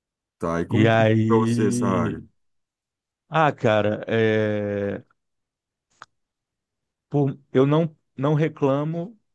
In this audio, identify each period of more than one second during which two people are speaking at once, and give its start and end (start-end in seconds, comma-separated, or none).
0.8-2.2